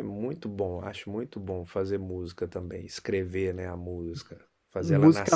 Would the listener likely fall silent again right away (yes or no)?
no